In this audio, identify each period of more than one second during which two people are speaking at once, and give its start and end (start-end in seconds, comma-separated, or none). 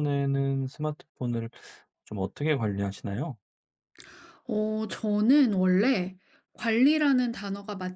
none